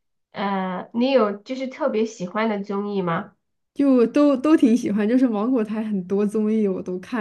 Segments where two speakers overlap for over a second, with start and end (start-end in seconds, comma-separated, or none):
none